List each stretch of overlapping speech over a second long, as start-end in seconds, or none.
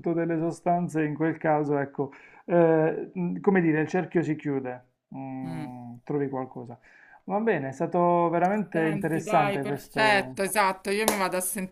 8.7-10.4